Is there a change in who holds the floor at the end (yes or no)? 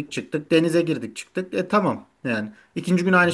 no